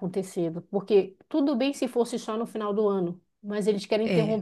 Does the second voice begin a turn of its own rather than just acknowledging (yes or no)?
no